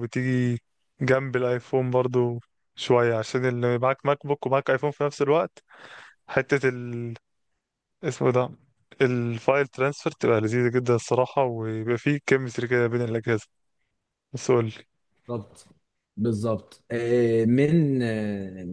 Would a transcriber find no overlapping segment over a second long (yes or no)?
yes